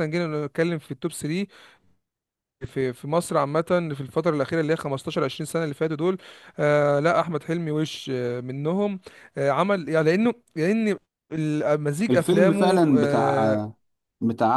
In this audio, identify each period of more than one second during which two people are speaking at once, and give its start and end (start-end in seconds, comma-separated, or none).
12.1-13.6